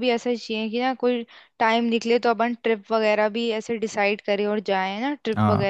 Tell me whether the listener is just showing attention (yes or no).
no